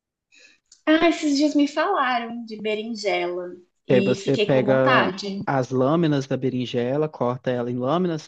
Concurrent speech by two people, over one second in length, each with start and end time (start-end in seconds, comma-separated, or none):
3.9-5.4